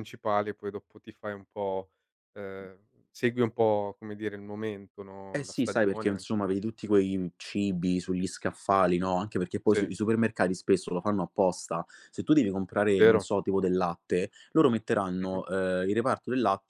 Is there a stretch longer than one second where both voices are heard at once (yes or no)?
yes